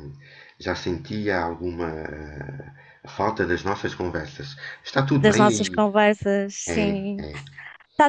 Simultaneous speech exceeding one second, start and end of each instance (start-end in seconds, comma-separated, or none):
none